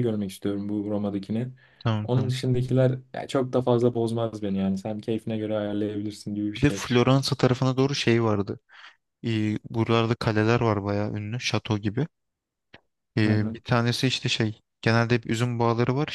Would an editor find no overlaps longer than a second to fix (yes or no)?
yes